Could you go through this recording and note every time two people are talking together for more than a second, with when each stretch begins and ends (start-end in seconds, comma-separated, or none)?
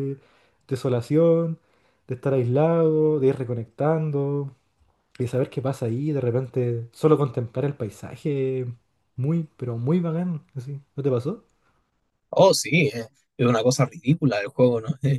none